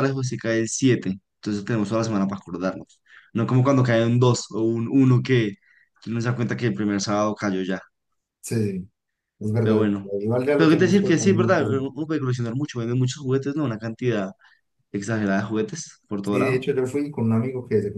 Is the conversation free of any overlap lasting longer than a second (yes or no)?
no